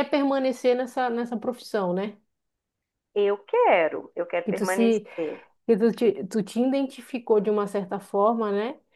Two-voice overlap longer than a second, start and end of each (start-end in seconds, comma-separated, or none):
none